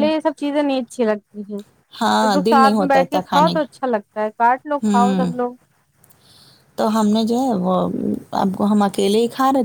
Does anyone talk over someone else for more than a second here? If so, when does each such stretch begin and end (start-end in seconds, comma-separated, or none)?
2.2-3.8